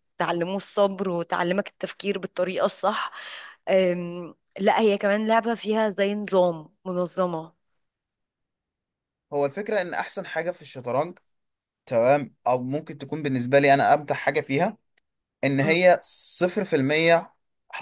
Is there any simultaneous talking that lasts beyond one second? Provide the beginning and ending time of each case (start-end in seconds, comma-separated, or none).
none